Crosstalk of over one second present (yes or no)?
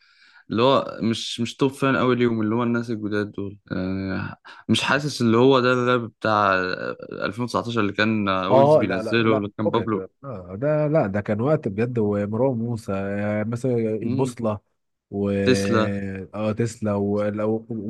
yes